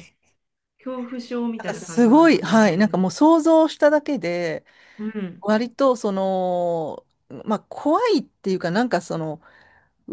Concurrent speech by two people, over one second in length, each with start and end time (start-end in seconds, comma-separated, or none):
1.6-2.9